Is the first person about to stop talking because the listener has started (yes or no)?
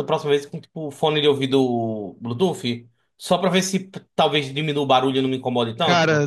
yes